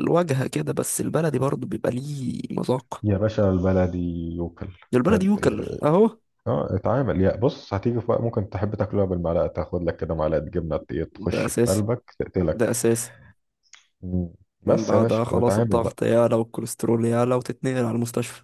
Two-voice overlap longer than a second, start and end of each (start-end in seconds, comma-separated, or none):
14.7-16.0